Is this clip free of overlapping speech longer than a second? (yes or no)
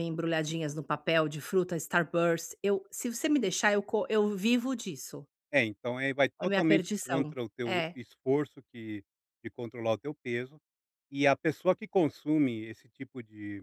no